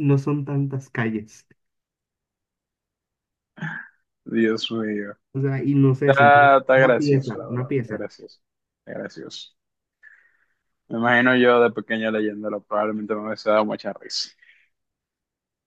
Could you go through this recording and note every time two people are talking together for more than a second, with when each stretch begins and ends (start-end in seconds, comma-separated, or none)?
6.0-8.0